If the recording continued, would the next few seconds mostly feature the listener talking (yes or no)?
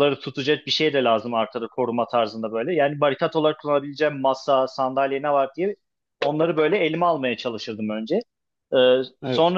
no